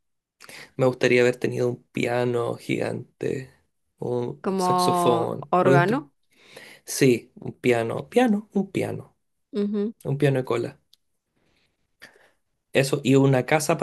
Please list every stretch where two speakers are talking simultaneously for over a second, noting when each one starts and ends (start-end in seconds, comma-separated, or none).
4.4-6.0